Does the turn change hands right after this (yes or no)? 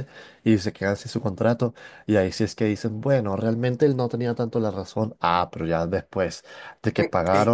no